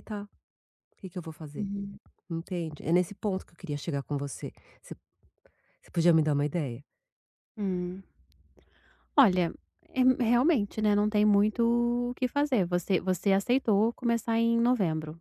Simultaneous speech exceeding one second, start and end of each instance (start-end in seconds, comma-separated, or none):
none